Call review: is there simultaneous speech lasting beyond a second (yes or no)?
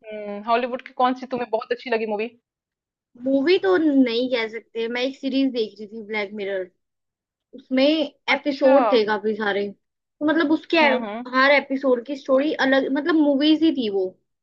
no